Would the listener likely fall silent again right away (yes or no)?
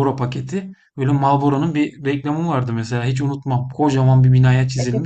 no